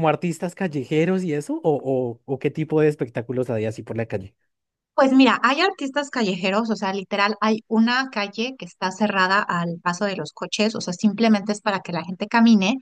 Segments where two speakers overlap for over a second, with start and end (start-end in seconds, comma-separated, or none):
none